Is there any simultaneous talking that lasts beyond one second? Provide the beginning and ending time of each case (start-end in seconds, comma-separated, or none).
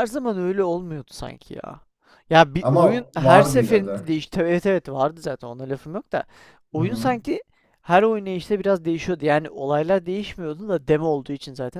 2.6-4.1